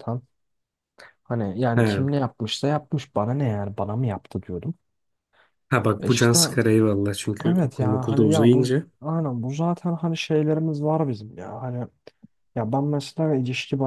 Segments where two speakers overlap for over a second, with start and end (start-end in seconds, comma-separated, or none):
7.5-8.9